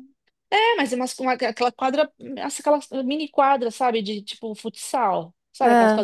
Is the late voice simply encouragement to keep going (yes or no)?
yes